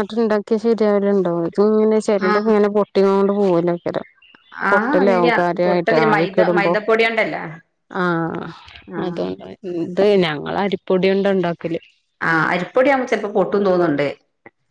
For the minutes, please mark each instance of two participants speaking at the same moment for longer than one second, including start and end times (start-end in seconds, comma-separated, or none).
4.7-6.7